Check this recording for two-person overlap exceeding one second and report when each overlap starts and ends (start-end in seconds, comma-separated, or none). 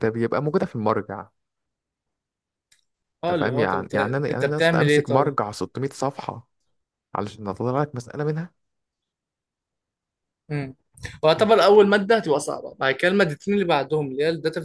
3.3-5.3